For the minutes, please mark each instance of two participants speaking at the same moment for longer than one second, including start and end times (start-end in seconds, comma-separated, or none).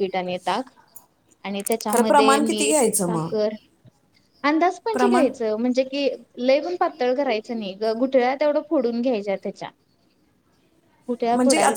1.9-3.3